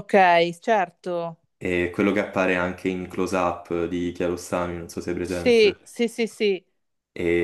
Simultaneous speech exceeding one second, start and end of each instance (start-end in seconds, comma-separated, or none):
none